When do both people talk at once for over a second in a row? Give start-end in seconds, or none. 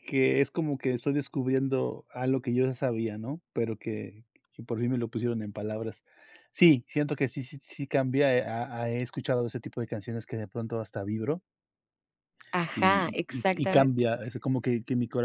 12.7-14.1